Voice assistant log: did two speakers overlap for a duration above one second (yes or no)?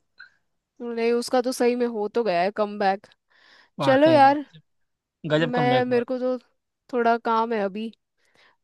no